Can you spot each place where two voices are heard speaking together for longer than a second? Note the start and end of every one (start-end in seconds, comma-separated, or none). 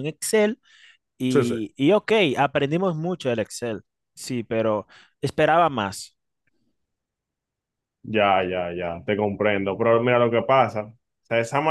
none